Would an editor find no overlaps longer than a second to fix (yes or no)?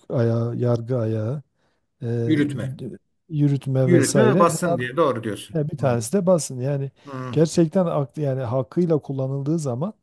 no